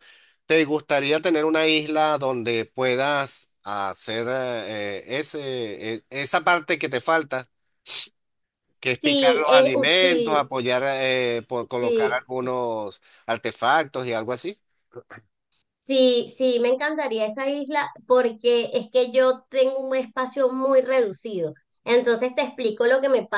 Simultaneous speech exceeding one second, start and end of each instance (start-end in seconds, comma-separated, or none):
9.0-10.5